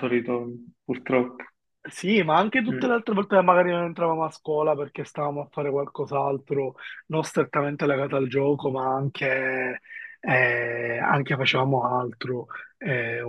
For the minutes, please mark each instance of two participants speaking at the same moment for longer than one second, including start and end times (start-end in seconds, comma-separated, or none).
none